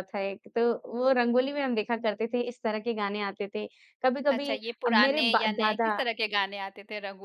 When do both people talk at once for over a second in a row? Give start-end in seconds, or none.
4.3-5.9